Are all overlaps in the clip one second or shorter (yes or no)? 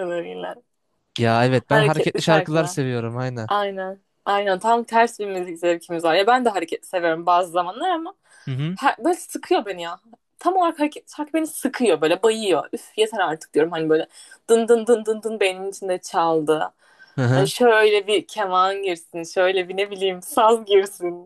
no